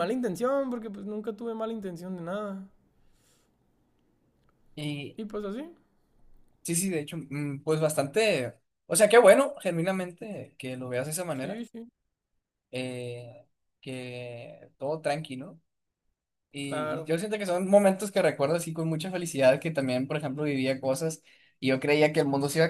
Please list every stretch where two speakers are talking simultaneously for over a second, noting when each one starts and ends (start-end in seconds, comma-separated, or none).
none